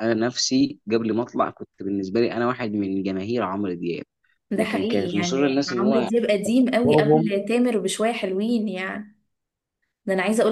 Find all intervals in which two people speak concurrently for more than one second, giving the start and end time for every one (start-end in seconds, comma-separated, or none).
4.6-6.1